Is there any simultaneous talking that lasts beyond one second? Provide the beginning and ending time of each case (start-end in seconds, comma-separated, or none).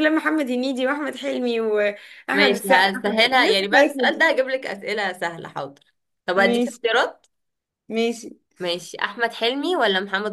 2.3-4.3